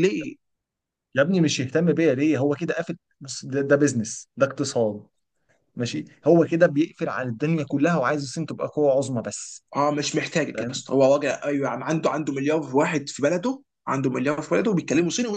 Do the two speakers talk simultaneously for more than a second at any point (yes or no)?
no